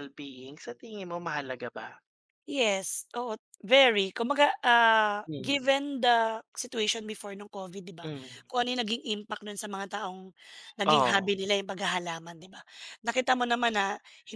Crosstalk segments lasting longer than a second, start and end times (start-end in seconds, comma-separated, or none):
none